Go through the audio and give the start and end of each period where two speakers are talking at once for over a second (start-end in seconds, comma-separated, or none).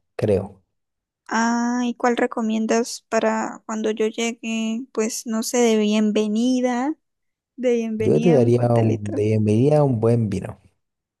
8.0-9.2